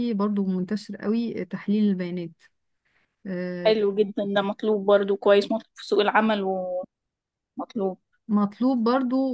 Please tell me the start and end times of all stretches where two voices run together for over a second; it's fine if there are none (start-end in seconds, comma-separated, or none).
none